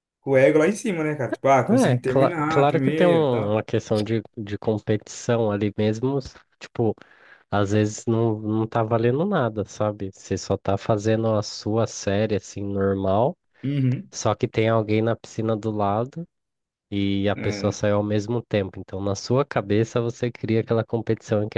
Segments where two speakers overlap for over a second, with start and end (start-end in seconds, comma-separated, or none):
1.7-3.6